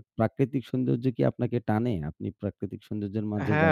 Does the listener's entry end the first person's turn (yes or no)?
yes